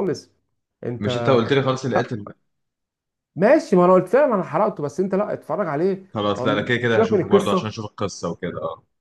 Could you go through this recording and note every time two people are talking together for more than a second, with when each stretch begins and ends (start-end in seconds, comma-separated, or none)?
6.1-7.7